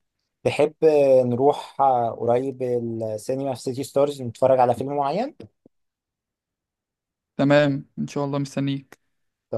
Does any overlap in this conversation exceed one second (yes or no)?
no